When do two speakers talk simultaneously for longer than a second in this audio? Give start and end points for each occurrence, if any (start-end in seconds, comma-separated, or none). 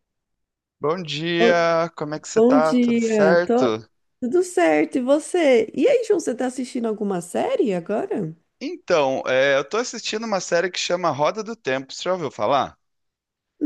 2.3-3.8